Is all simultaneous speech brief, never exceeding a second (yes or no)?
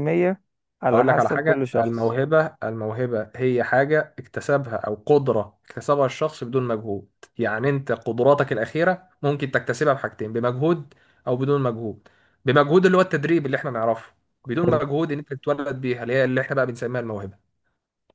no